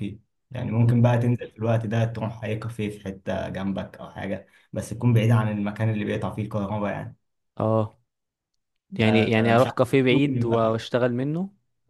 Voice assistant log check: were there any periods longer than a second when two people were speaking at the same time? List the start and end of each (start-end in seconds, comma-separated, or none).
9.0-10.6